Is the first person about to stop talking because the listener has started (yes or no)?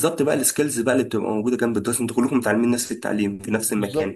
no